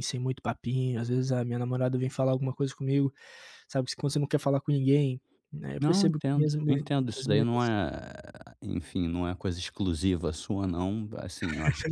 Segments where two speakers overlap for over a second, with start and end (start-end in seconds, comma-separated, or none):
5.8-7.8